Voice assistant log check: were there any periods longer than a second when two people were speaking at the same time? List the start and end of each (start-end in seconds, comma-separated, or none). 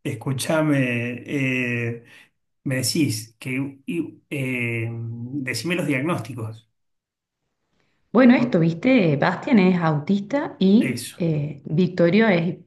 none